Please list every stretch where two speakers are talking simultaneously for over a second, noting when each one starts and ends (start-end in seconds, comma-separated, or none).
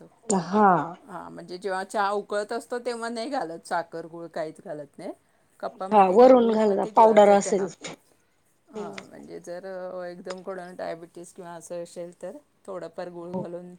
5.9-7.7